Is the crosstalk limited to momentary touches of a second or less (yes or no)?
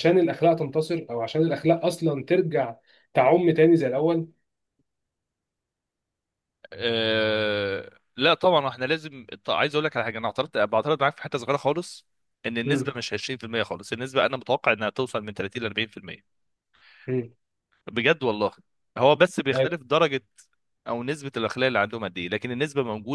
yes